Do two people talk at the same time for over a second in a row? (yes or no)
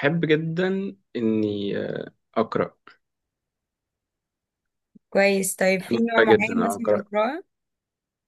yes